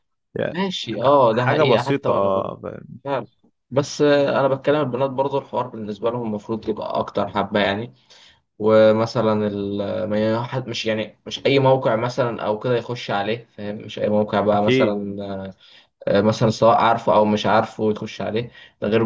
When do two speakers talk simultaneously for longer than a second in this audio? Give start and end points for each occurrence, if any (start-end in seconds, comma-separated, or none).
1.3-2.5